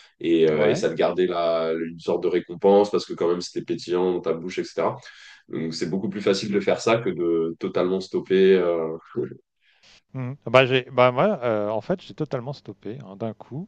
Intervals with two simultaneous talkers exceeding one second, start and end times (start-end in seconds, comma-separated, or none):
none